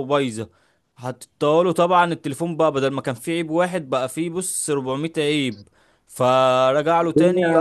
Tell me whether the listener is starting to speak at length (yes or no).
yes